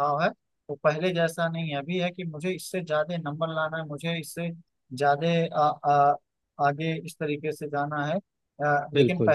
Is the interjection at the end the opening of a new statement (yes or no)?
no